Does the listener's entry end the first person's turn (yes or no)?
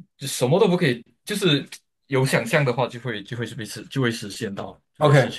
yes